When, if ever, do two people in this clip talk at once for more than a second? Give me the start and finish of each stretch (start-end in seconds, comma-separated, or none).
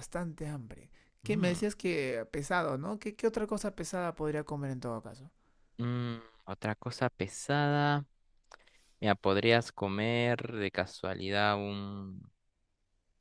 none